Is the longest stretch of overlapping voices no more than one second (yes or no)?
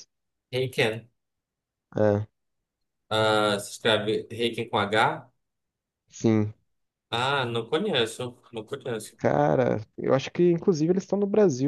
yes